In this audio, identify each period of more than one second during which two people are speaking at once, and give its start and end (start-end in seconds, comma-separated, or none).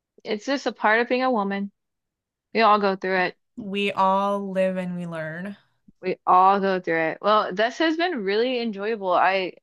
none